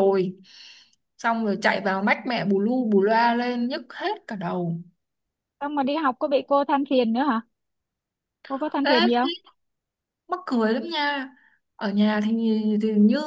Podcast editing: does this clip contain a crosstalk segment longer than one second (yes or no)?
no